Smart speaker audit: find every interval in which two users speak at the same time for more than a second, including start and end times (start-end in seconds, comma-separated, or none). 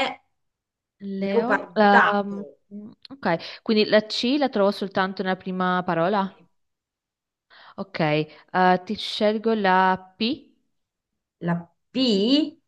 1.2-2.4